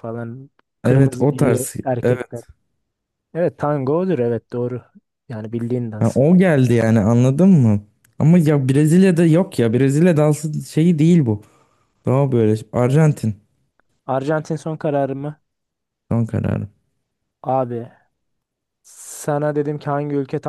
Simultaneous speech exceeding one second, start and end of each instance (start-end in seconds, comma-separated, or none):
0.8-2.4